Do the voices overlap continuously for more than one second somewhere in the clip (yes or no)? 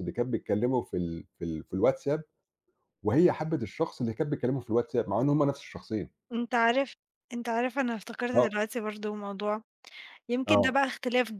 no